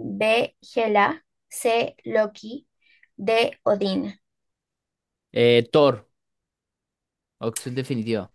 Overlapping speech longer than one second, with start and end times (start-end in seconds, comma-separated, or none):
none